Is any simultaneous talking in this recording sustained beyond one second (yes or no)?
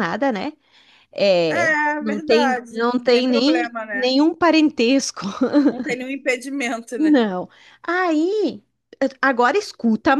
yes